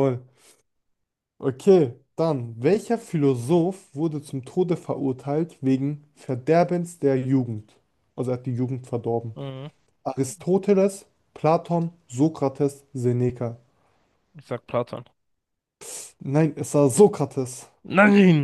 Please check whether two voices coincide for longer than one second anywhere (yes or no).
no